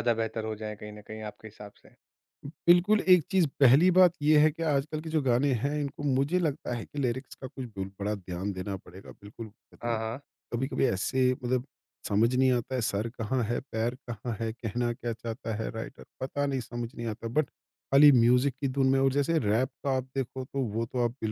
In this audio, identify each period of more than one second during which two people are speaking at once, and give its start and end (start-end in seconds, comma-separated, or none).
none